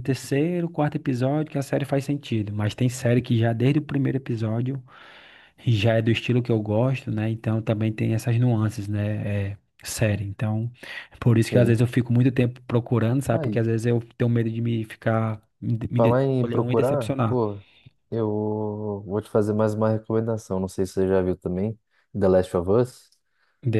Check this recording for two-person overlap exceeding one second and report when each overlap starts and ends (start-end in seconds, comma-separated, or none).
15.9-17.4